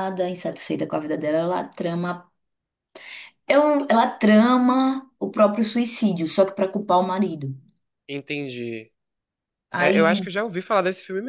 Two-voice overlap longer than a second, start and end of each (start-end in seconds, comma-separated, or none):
none